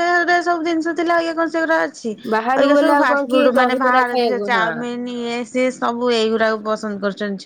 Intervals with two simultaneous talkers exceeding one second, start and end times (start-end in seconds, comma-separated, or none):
2.6-4.7